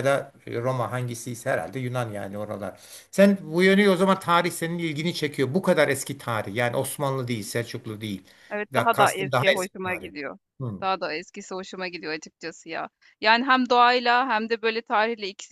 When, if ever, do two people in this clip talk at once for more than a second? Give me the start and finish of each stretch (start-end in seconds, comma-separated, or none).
8.7-10.1